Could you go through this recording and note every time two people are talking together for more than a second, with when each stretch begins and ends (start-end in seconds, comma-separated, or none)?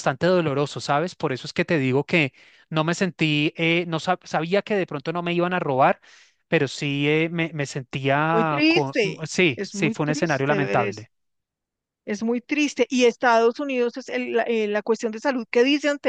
8.3-11.1